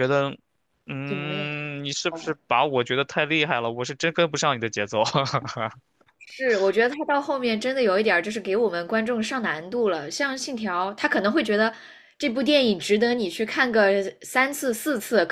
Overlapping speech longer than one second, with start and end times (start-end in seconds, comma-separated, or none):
1.0-2.4